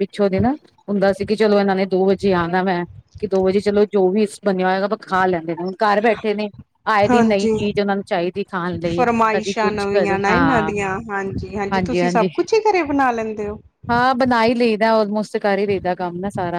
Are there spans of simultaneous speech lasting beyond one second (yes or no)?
yes